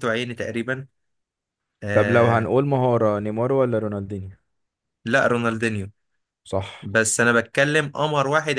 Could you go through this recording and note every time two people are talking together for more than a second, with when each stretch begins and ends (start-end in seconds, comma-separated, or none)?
none